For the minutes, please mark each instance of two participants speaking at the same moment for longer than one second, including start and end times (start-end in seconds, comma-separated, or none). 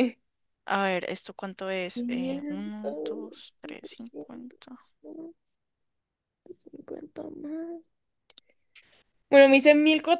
1.9-4.6